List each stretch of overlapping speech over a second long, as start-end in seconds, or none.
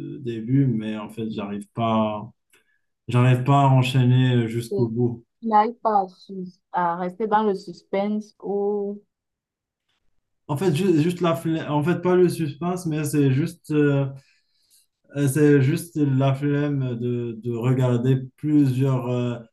none